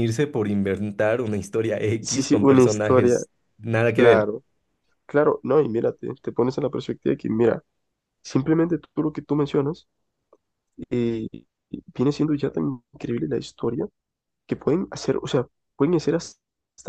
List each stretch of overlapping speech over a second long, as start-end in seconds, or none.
2.0-3.2